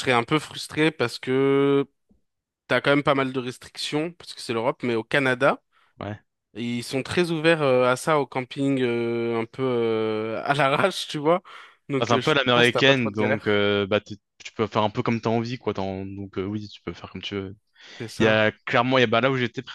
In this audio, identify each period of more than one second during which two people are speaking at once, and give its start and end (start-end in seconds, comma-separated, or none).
12.0-13.7